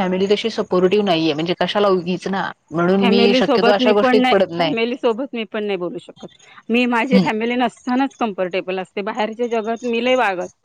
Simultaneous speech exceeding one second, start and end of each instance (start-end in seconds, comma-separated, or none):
3.0-4.5